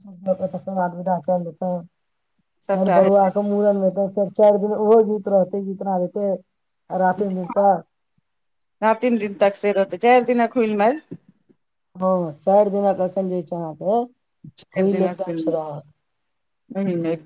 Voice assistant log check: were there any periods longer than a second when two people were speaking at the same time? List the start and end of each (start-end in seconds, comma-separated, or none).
none